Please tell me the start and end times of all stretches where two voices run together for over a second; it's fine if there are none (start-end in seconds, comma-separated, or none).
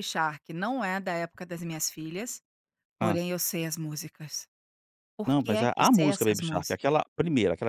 5.3-6.8